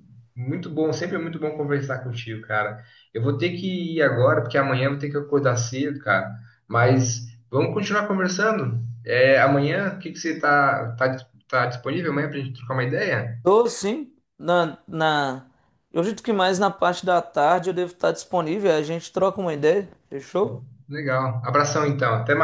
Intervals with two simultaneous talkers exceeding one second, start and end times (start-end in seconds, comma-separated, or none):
none